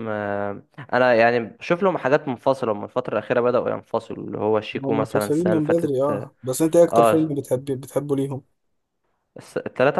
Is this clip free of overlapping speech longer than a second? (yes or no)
no